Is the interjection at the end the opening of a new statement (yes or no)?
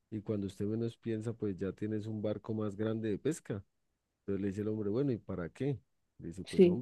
no